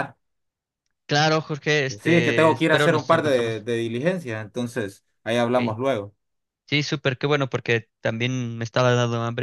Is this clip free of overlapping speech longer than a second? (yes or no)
no